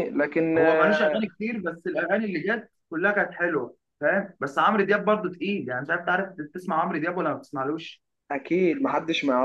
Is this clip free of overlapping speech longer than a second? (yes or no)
yes